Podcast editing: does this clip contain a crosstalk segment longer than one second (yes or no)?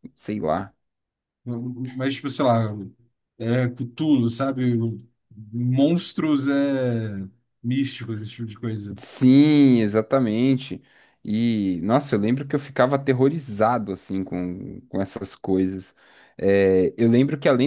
no